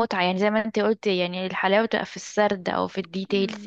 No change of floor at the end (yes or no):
no